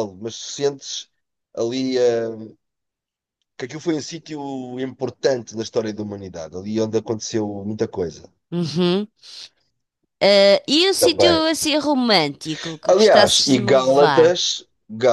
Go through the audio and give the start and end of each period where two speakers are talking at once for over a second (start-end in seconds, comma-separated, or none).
12.9-14.3